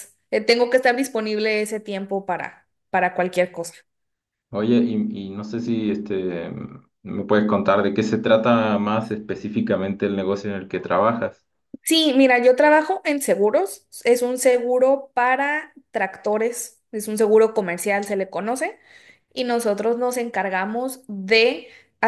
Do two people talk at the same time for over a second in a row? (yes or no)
no